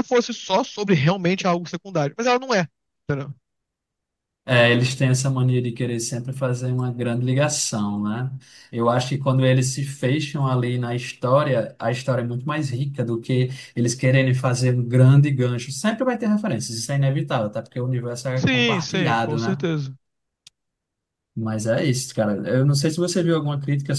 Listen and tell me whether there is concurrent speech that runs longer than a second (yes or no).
yes